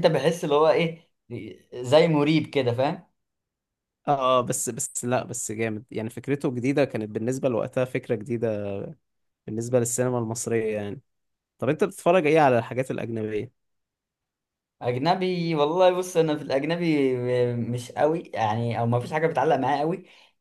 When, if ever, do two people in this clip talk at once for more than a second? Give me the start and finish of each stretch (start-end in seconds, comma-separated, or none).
none